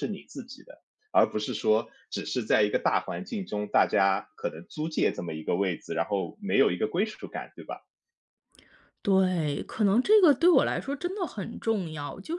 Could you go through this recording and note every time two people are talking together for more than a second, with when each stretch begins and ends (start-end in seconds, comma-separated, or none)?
none